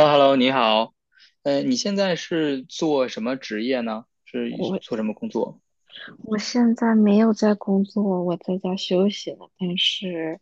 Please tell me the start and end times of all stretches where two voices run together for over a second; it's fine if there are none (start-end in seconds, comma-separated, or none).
none